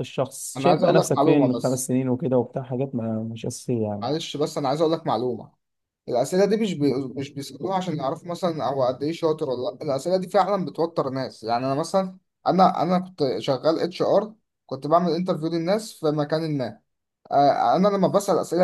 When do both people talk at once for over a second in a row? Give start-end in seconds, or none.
0.6-1.9